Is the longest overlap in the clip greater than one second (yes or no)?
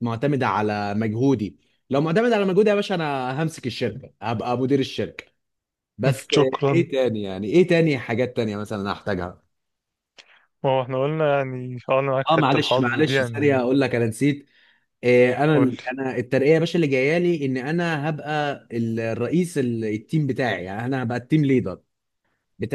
yes